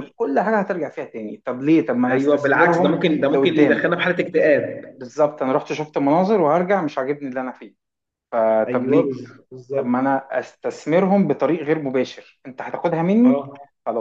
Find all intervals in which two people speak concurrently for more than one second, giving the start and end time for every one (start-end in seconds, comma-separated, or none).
2.1-3.8